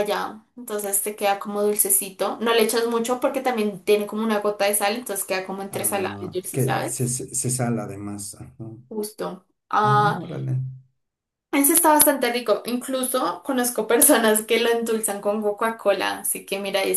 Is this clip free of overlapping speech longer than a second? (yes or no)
no